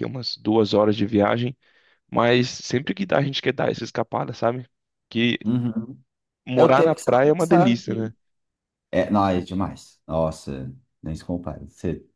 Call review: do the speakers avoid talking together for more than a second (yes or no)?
no